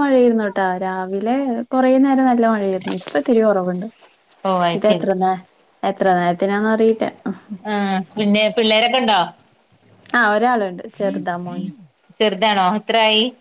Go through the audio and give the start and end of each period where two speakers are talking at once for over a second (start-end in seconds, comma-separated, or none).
none